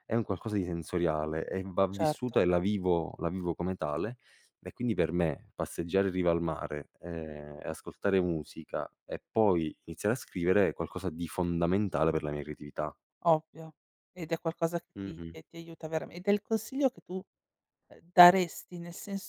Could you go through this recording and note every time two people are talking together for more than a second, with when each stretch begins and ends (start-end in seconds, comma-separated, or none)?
none